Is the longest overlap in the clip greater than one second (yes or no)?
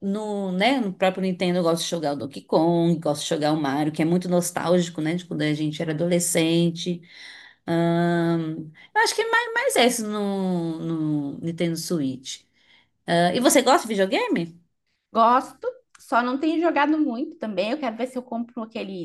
no